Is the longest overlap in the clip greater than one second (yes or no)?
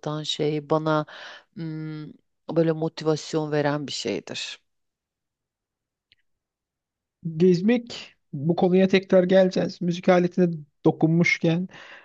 no